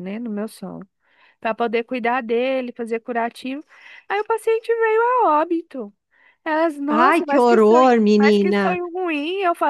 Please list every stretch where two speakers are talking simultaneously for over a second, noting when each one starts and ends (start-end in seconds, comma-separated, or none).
7.1-8.6